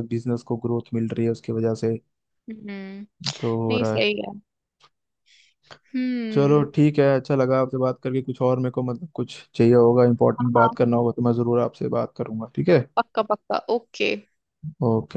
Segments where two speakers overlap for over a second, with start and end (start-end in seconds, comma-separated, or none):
none